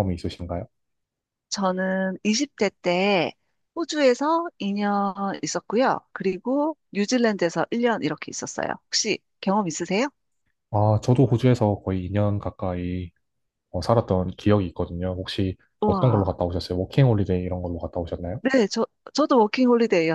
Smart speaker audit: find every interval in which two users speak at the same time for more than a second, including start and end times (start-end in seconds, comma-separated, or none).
none